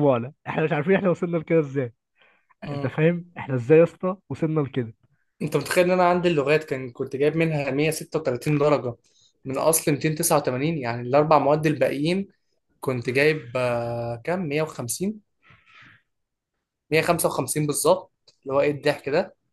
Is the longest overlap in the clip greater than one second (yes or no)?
no